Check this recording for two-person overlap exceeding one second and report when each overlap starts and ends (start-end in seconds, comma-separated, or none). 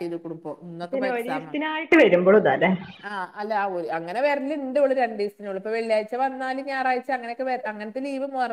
none